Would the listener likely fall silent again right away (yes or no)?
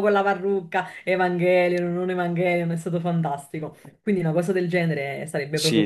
no